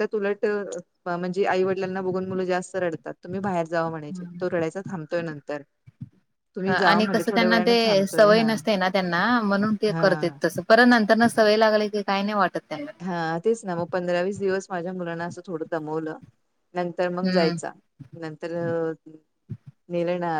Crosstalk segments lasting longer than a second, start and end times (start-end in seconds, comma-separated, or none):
6.7-8.5